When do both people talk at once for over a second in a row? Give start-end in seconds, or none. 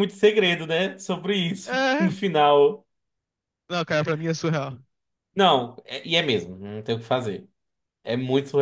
none